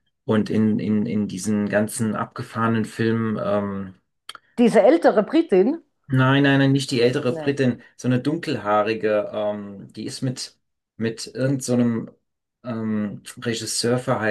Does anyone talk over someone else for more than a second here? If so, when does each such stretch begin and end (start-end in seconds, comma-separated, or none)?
none